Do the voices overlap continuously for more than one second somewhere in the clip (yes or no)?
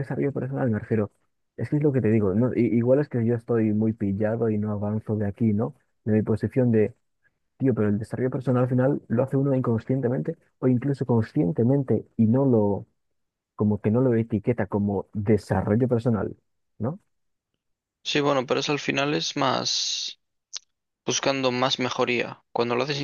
no